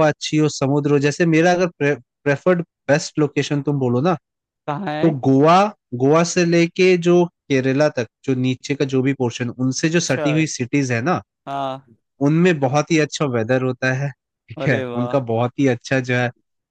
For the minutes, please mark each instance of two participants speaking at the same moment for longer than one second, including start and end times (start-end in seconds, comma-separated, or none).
none